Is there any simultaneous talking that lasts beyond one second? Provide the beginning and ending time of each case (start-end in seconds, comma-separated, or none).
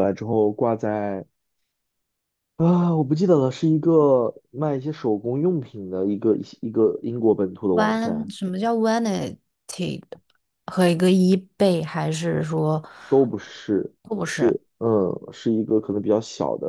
none